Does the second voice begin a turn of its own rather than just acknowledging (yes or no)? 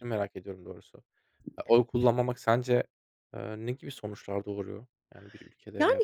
yes